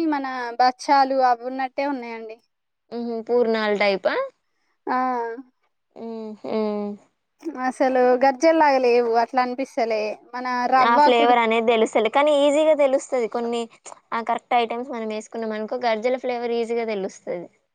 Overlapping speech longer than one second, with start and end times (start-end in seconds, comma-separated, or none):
none